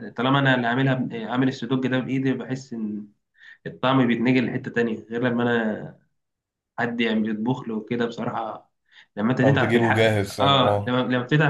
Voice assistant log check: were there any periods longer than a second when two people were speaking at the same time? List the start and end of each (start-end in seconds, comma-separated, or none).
9.4-11.0